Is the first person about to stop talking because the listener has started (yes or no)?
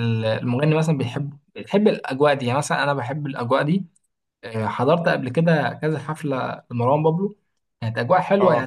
no